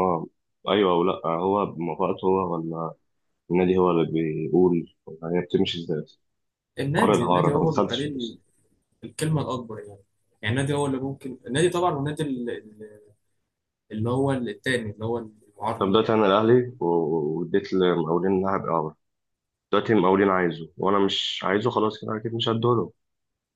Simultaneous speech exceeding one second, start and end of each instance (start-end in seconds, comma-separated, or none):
7.0-8.3